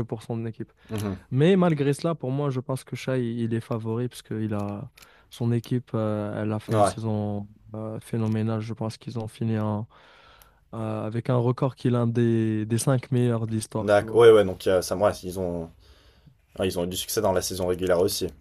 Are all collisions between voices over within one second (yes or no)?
yes